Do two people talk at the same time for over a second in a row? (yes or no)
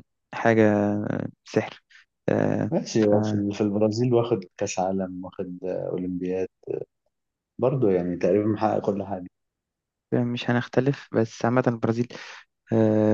no